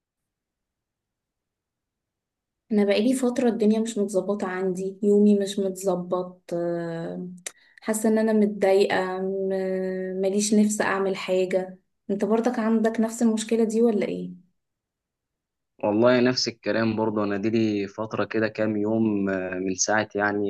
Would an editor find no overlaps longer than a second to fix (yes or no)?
yes